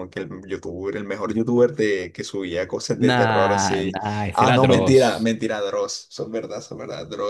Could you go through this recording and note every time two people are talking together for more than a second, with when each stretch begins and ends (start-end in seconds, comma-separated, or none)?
3.0-5.3